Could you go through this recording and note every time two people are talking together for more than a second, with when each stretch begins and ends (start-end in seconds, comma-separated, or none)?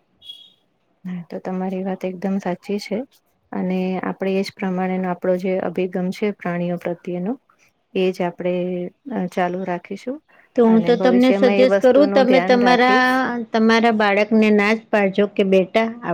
10.7-13.1